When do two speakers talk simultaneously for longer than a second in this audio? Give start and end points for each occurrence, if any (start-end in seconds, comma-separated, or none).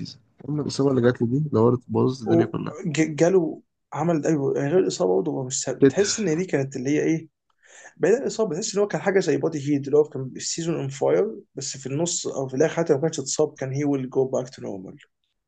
none